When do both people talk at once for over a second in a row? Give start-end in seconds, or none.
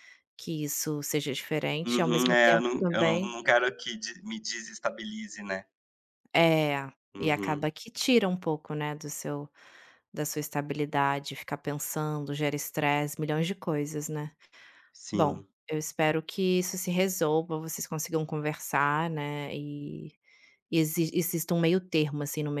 1.8-3.4